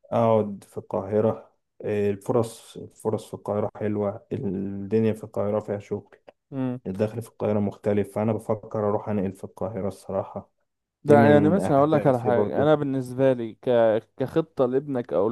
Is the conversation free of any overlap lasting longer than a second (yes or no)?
no